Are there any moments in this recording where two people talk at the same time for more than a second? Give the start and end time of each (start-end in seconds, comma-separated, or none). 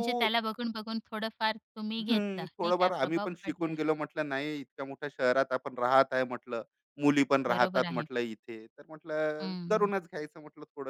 2.0-3.7